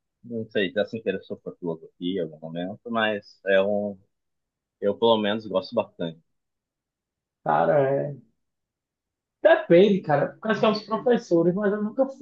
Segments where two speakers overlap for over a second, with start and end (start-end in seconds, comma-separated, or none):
none